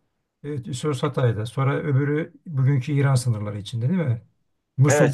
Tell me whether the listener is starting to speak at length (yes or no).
yes